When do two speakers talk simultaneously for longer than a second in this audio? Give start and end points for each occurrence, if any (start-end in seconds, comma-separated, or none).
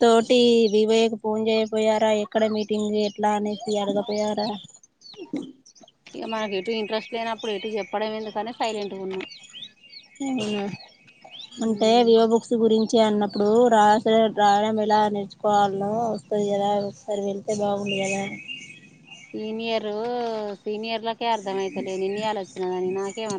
none